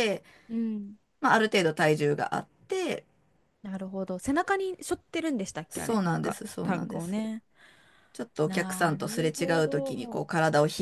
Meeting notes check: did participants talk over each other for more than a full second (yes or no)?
yes